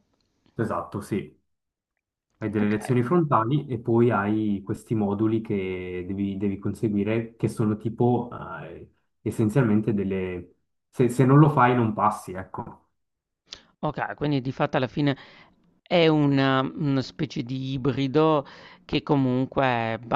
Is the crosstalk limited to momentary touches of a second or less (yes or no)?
yes